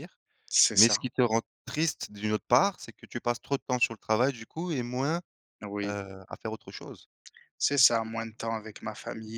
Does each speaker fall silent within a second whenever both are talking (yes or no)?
yes